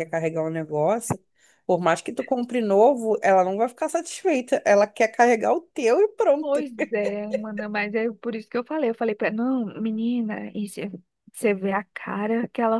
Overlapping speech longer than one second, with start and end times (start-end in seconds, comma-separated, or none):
none